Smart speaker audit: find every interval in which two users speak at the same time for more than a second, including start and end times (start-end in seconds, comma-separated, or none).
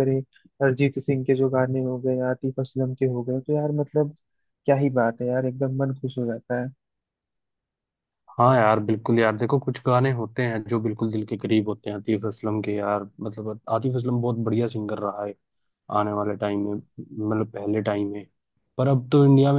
none